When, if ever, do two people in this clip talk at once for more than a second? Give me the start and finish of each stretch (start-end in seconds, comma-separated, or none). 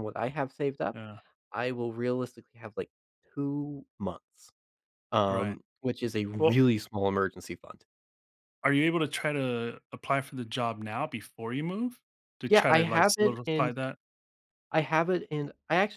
12.5-13.7